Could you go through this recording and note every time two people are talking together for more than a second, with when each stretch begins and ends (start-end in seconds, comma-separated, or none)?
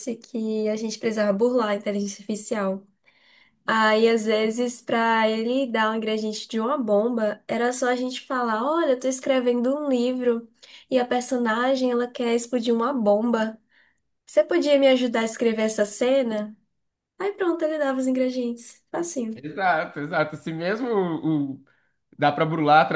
none